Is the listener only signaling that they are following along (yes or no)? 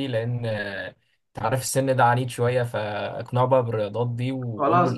no